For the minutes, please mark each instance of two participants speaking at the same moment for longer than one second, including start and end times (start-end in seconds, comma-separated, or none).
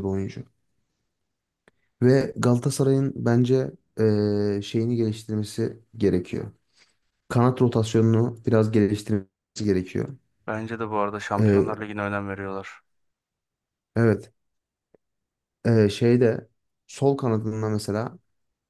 none